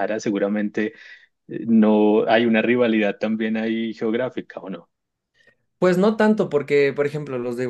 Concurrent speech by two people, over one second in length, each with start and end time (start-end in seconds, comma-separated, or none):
none